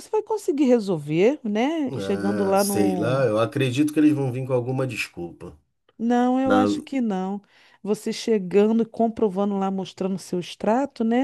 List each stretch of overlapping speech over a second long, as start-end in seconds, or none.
1.9-3.2